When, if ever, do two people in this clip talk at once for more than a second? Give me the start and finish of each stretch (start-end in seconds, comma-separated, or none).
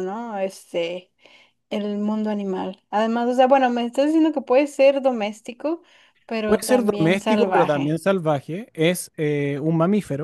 6.5-8.0